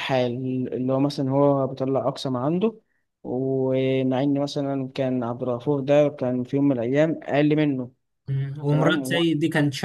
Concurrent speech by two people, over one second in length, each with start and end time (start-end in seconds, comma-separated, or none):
none